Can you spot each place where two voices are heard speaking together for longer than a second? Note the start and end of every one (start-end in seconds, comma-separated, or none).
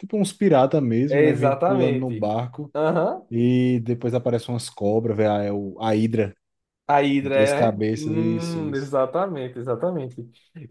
1.1-2.3, 7.2-8.9